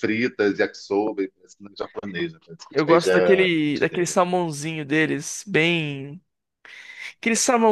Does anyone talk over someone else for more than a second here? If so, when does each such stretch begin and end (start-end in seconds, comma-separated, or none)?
2.7-4.1